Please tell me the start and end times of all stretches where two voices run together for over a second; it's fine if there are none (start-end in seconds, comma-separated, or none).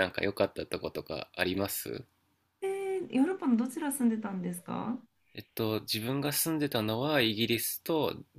none